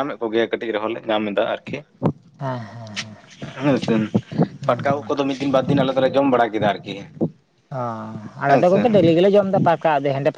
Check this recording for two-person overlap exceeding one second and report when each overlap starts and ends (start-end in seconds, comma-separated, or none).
none